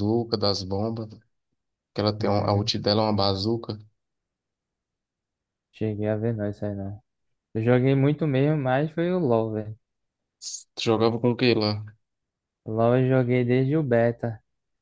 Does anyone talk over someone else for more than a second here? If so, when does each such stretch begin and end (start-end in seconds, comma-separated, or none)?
none